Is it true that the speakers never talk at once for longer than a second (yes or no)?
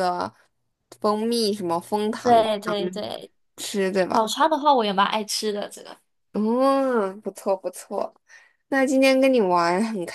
yes